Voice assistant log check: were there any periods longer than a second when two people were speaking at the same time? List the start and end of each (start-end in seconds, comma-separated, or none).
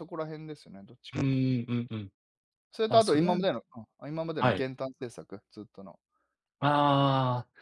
none